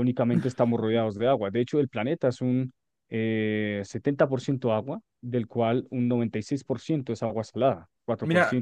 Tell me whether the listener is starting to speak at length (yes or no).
yes